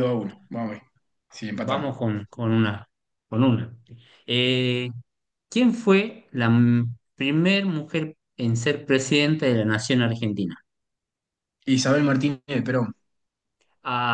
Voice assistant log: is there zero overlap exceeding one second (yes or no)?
yes